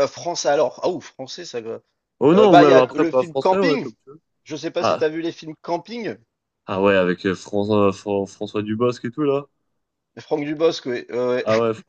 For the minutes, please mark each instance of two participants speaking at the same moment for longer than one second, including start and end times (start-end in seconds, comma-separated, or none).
2.3-3.9